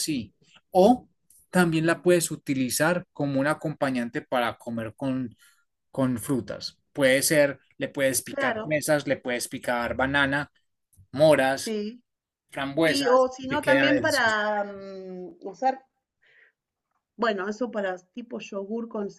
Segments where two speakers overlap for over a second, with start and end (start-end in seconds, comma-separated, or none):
12.8-14.4